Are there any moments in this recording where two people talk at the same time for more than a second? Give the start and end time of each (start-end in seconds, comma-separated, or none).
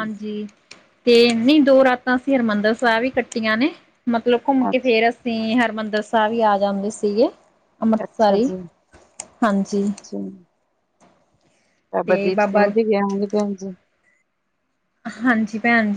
none